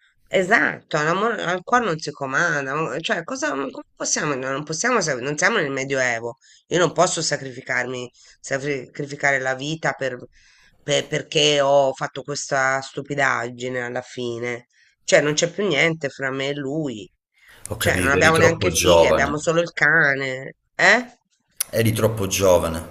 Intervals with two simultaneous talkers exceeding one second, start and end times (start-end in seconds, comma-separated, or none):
17.8-19.5